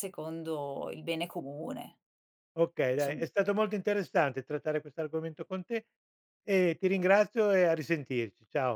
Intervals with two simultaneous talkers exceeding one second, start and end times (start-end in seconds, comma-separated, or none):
none